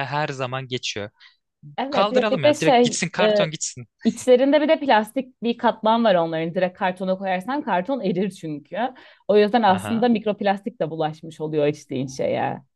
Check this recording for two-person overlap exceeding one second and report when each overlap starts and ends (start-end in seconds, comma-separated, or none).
1.9-3.4